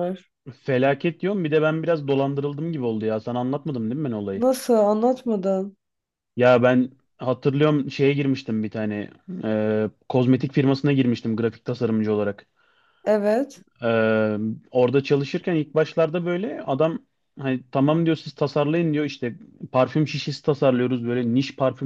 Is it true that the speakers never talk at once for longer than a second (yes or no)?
yes